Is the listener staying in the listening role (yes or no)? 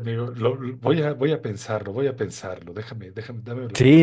no